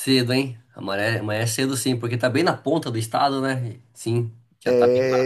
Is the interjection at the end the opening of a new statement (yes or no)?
yes